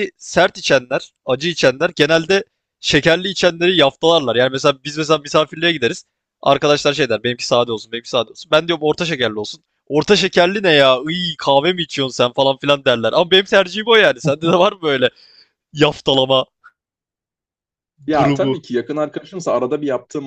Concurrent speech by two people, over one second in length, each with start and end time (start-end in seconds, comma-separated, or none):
none